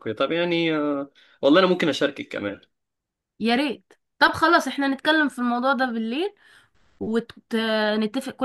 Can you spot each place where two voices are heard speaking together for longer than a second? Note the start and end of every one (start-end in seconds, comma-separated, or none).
none